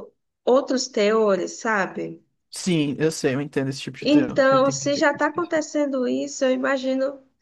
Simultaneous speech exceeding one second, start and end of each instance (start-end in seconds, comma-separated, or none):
4.0-5.7